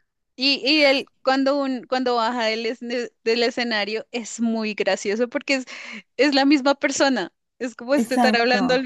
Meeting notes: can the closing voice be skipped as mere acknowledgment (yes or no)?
yes